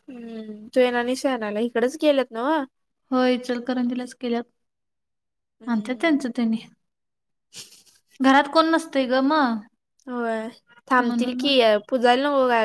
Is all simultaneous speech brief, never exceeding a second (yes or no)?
yes